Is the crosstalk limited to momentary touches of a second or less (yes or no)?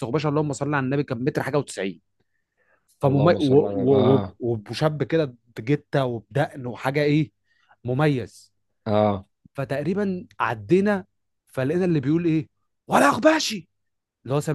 no